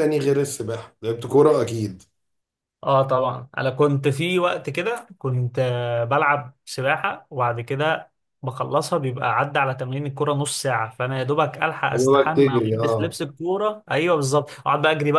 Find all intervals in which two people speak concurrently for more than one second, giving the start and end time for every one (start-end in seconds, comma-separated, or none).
11.9-13.2